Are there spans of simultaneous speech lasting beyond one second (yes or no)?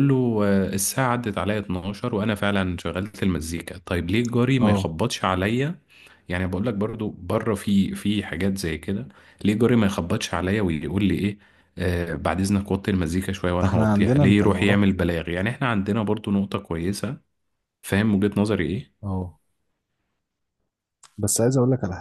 yes